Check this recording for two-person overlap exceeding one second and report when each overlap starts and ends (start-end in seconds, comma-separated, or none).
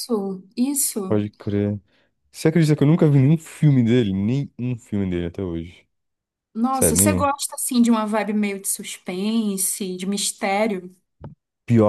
none